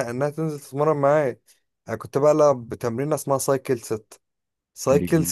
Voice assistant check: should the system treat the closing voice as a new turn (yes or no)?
no